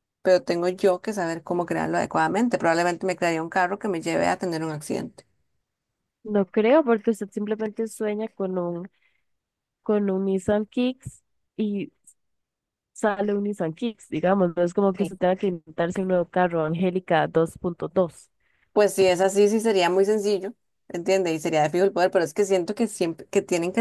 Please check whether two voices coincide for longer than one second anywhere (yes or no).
no